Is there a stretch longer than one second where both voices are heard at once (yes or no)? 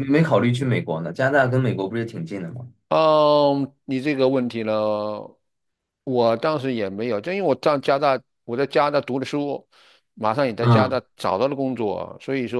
no